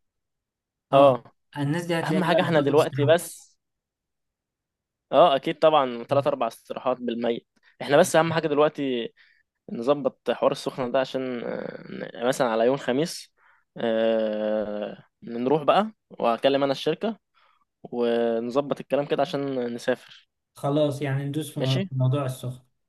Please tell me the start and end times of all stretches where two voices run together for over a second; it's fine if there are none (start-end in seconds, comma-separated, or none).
2.0-3.3